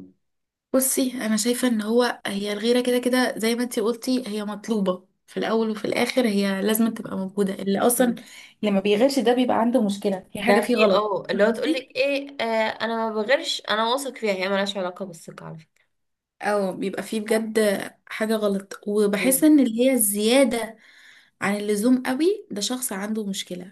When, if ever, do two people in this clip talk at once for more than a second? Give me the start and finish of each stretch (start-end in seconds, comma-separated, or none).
10.4-11.9